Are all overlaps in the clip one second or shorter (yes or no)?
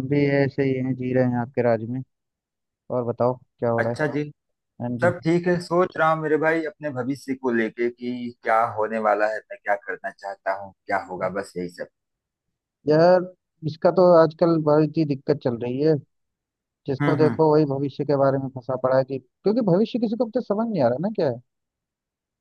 yes